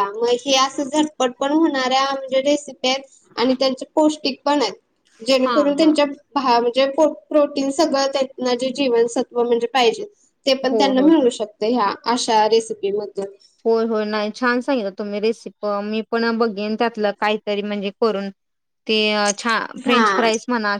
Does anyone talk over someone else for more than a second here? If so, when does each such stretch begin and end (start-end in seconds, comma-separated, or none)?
none